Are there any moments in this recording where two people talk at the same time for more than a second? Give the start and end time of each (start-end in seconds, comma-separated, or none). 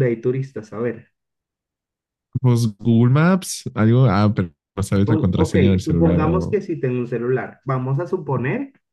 5.0-6.6